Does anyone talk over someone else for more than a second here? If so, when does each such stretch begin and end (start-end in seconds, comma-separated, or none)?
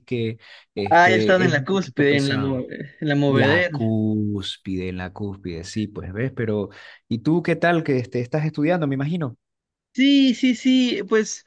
0.9-2.6